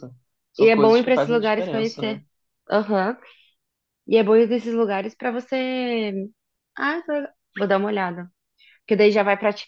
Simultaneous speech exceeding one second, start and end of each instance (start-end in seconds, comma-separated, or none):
0.6-2.2